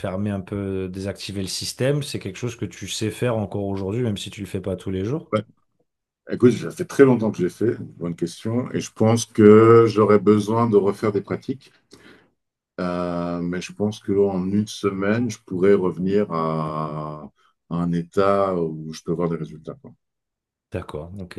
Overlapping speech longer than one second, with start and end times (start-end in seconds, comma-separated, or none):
none